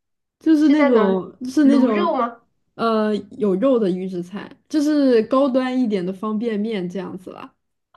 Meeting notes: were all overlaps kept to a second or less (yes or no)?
no